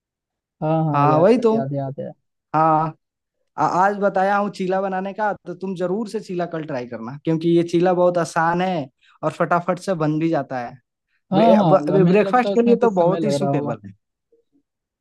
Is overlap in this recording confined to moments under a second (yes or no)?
no